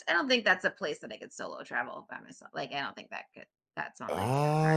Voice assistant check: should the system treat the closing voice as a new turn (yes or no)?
yes